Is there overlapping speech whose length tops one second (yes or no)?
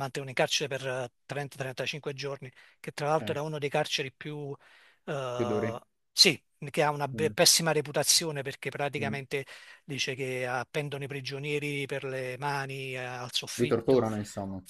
no